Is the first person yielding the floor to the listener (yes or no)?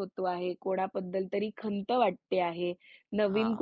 no